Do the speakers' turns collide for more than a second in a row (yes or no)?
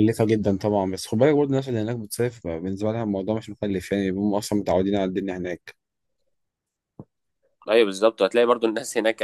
no